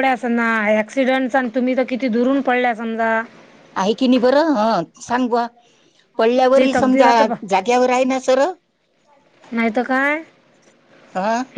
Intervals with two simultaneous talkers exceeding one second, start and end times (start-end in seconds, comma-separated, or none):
none